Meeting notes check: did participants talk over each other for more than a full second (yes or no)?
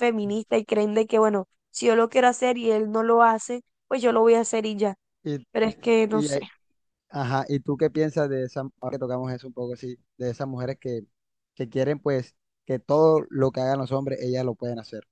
no